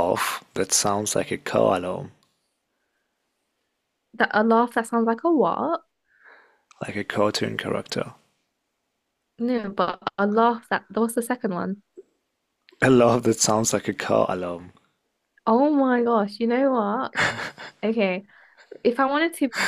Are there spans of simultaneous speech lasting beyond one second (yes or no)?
no